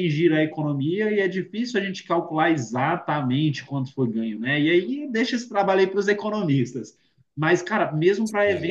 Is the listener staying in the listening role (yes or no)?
yes